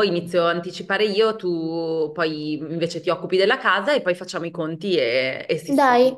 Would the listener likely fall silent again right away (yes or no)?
no